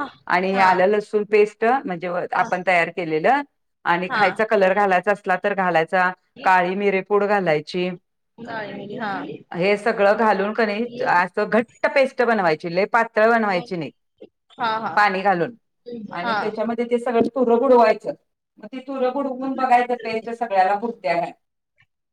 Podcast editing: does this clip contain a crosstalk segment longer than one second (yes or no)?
no